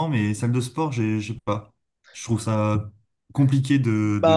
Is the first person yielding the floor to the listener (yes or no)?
yes